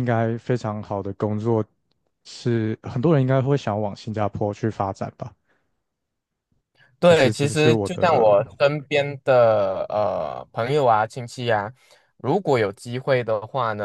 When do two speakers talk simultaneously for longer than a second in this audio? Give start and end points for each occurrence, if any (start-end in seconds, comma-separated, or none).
7.0-8.3